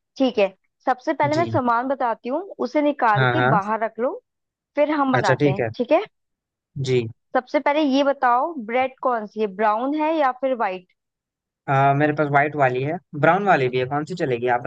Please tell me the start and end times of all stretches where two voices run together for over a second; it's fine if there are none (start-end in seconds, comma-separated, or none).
none